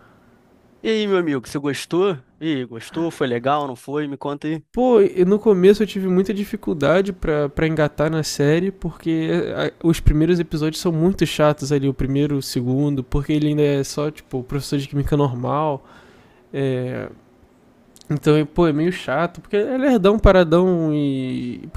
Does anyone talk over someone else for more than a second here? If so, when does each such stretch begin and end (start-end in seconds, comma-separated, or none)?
none